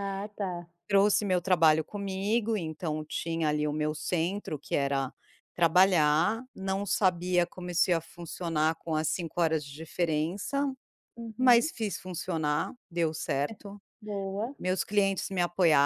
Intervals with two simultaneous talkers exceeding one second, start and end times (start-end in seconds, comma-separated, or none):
none